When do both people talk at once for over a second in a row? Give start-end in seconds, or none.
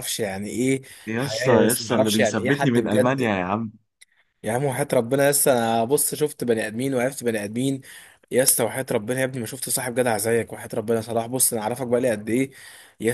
1.2-3.3